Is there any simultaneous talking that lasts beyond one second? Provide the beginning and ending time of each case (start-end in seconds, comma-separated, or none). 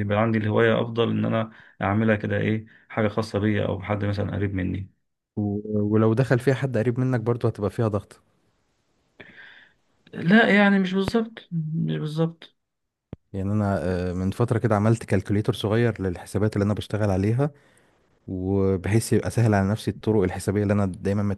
none